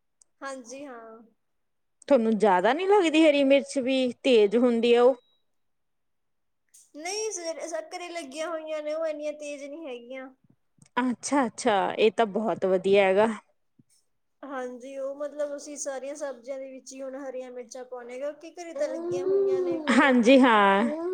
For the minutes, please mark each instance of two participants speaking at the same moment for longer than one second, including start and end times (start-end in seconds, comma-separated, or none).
none